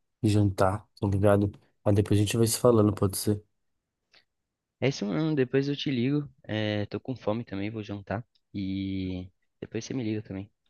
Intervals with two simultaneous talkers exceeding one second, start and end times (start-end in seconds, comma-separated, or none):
none